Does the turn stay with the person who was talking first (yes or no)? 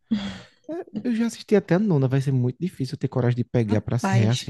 no